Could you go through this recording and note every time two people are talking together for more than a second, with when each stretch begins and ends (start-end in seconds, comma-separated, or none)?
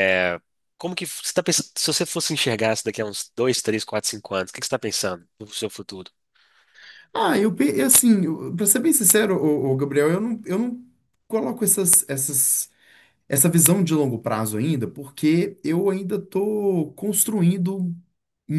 none